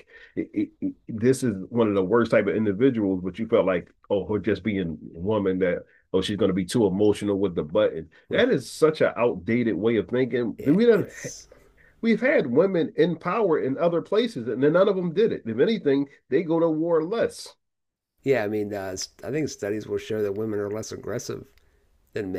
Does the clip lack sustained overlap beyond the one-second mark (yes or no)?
yes